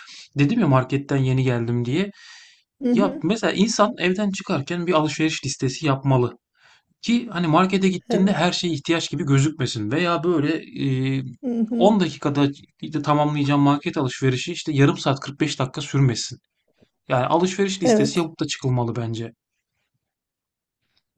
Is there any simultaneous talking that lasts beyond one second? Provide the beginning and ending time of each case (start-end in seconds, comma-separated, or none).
none